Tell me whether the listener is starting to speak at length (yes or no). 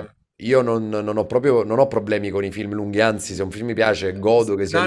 yes